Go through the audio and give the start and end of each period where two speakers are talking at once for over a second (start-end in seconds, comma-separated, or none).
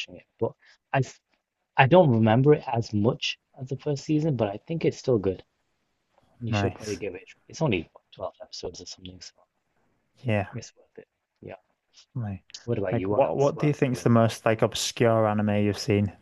12.9-14.1